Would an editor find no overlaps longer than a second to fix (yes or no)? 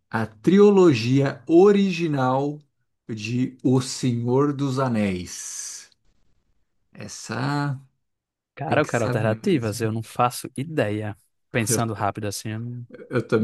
no